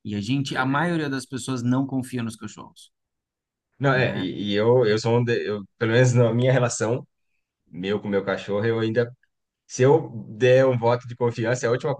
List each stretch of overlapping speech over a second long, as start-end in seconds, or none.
none